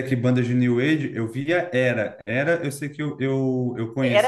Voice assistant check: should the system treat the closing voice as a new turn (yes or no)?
yes